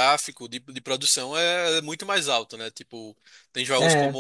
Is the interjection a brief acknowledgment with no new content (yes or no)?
yes